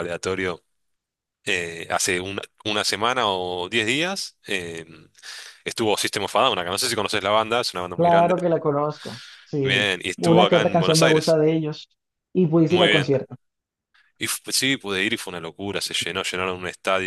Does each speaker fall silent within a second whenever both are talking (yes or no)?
no